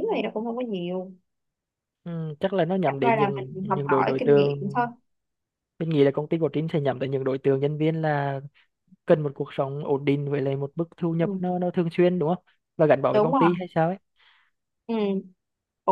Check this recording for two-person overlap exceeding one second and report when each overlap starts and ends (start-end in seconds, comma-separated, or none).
2.9-4.8